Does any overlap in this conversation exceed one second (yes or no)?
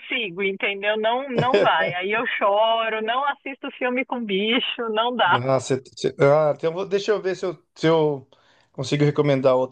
no